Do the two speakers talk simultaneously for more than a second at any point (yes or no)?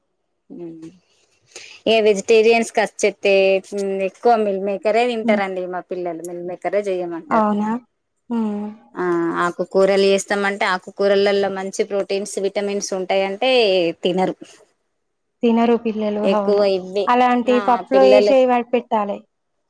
no